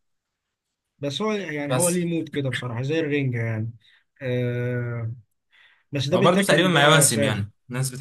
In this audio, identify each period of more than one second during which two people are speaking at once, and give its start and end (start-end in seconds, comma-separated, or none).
6.1-7.5